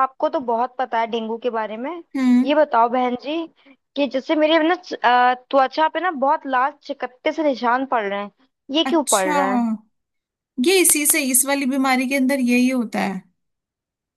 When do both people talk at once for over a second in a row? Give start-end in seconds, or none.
none